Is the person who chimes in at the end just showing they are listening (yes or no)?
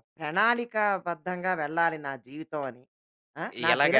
no